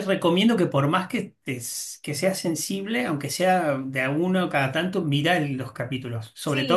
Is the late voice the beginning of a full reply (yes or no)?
no